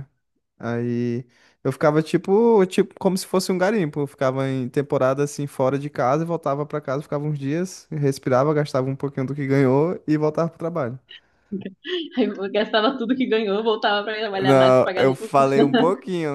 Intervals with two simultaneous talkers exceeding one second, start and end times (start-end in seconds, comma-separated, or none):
14.3-15.5